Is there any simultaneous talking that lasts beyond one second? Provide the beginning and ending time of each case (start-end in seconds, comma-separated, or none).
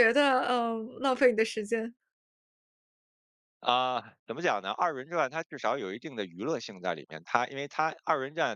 none